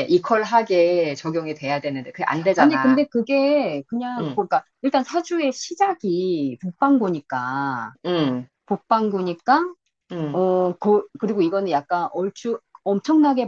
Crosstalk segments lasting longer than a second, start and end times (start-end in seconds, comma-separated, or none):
none